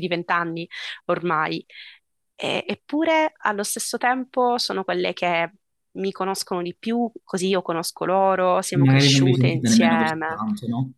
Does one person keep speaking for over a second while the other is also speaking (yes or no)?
yes